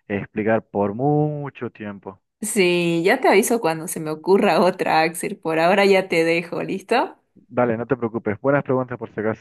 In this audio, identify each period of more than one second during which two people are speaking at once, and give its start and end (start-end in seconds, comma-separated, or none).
none